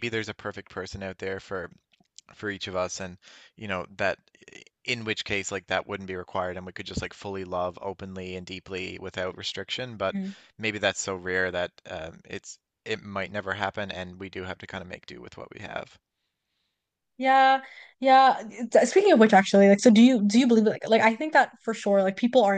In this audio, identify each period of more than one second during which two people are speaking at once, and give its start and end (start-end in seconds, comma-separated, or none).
none